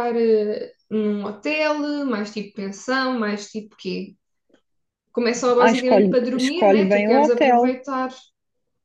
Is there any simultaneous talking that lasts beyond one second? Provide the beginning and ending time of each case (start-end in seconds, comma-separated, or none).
5.6-7.7